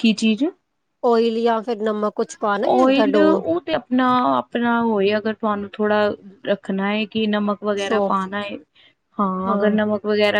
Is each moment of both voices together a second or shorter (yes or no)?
yes